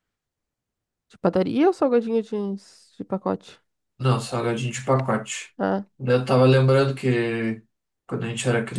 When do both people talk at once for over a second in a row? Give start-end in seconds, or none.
none